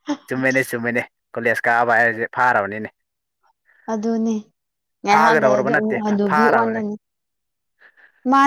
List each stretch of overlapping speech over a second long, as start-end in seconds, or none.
5.1-6.8